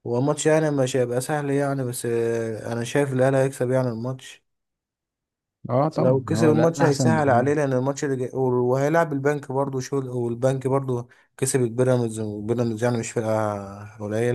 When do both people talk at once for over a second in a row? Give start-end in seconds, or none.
6.0-7.5